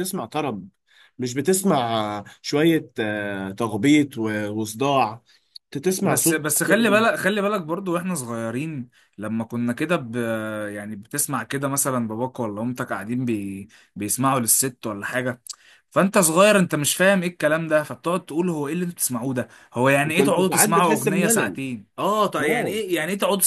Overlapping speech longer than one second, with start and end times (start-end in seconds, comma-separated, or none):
20.1-21.6